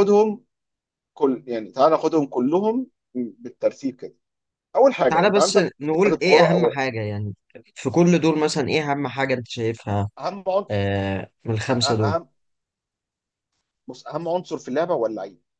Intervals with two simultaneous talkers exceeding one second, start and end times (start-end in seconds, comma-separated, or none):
5.1-6.8